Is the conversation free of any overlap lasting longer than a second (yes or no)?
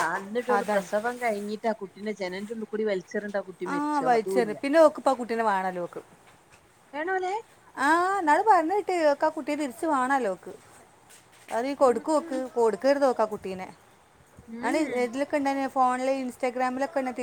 yes